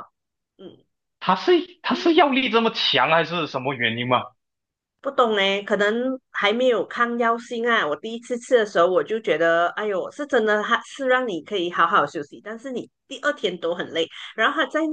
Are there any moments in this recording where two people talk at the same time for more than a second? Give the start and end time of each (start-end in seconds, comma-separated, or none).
none